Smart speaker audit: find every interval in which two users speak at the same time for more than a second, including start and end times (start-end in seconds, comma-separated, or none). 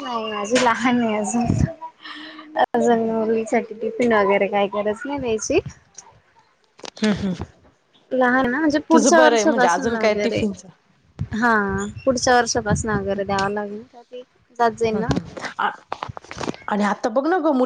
8.9-10.5